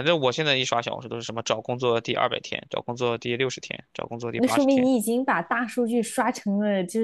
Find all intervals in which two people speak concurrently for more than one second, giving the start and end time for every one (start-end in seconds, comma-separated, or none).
none